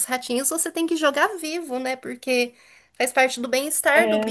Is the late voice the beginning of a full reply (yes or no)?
no